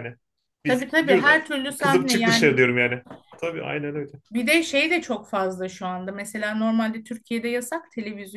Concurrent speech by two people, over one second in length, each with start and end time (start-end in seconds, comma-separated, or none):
0.6-2.6